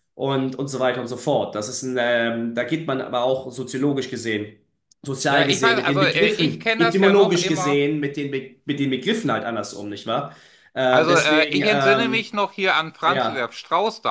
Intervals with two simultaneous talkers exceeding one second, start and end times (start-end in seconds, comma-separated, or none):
5.2-7.8, 10.9-12.2